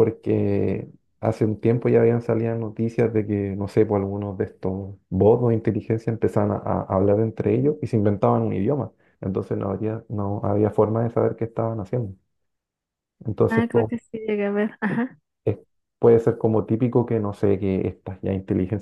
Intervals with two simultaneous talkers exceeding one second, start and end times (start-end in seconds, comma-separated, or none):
none